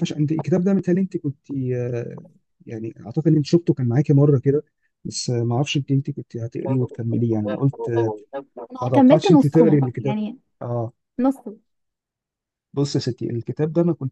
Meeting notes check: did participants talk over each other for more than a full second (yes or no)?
yes